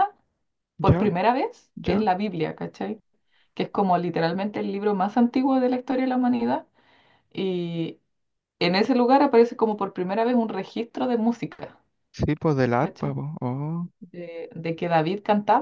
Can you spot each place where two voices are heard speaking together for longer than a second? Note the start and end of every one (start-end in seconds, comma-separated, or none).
none